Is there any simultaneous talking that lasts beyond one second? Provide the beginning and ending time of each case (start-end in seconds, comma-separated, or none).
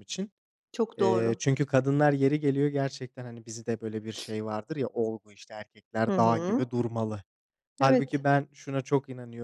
none